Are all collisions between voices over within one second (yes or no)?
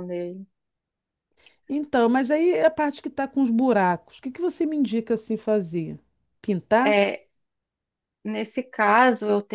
yes